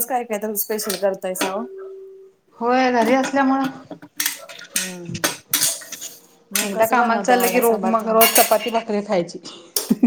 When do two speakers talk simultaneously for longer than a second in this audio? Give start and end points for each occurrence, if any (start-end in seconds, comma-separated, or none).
6.7-8.3